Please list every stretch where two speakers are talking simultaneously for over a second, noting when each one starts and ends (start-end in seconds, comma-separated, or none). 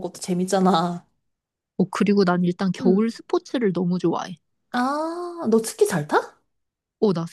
none